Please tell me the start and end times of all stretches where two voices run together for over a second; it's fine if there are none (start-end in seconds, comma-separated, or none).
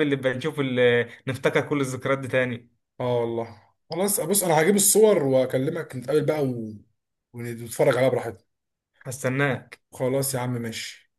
none